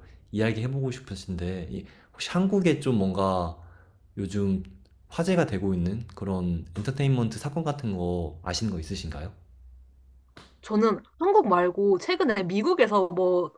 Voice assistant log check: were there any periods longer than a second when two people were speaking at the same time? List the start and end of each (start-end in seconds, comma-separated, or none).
none